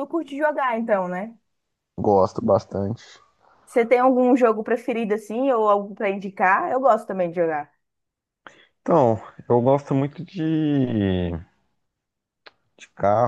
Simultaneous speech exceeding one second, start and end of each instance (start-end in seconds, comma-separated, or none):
none